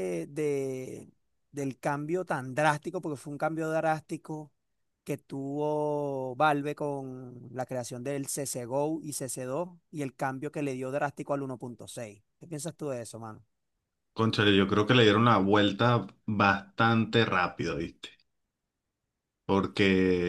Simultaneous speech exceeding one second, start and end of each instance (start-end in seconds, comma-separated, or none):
none